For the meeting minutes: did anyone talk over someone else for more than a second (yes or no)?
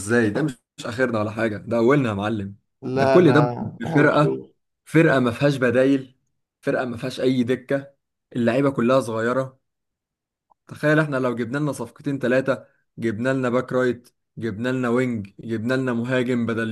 yes